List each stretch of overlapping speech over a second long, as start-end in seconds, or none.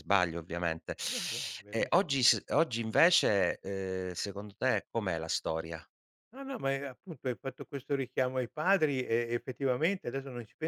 none